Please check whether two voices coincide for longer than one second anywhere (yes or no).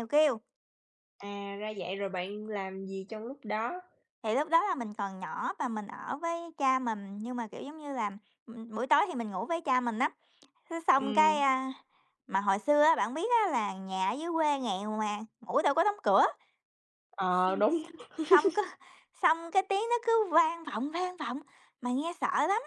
no